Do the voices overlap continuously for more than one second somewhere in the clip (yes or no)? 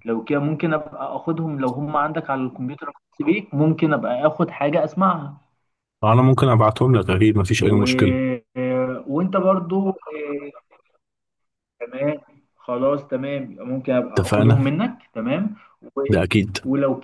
no